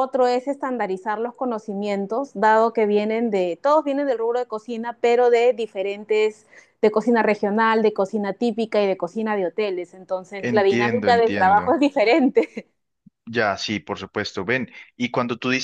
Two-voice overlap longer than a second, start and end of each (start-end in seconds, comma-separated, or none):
10.4-11.7